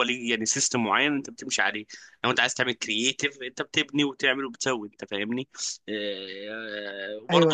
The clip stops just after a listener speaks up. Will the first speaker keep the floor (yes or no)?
yes